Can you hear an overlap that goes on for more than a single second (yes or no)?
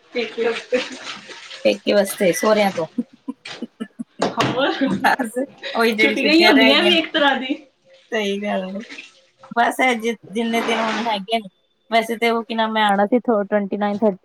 no